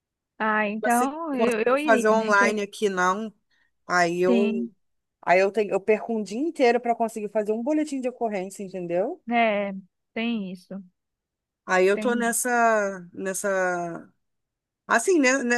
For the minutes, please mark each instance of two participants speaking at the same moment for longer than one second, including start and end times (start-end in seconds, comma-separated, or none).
0.8-2.6